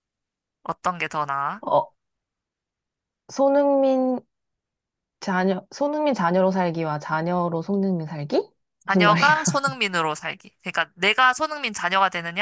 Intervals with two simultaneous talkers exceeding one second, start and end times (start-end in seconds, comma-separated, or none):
none